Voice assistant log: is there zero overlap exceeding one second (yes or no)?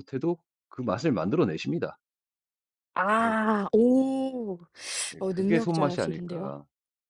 no